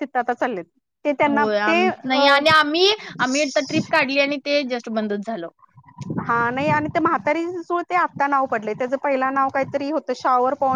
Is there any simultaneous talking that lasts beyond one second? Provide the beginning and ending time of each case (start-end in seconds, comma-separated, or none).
none